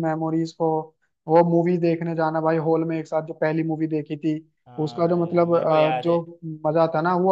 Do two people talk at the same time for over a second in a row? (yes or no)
yes